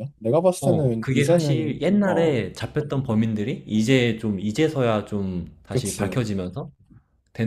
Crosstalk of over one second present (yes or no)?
yes